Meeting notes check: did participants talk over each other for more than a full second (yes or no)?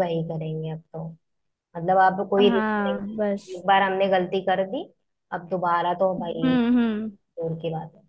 yes